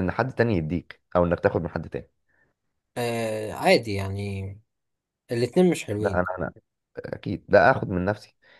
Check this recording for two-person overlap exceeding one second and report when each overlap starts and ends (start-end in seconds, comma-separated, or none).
none